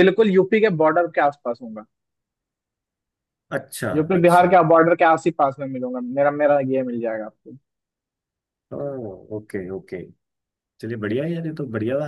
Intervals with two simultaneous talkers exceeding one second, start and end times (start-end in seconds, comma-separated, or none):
none